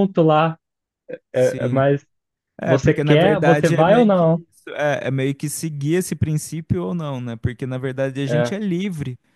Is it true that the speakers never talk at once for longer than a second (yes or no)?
no